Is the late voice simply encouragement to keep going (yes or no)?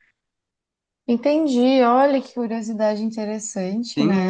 no